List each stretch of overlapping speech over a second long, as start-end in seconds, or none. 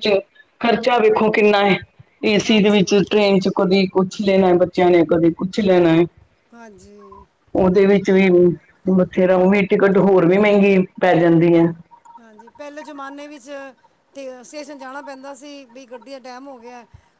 none